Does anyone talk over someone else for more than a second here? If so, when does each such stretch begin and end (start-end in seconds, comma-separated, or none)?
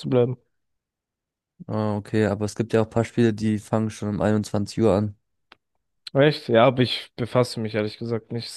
none